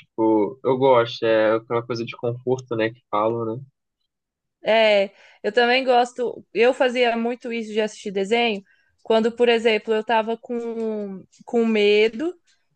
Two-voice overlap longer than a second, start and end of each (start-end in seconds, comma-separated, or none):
none